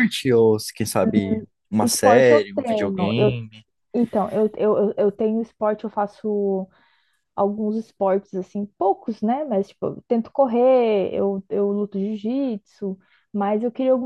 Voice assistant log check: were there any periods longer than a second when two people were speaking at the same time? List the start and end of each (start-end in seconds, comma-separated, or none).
1.8-3.4